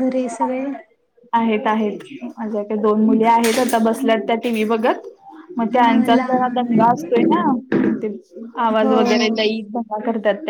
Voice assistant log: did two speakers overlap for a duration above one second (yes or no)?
yes